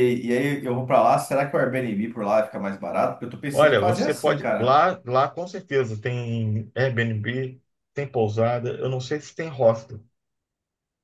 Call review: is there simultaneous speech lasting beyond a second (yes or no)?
yes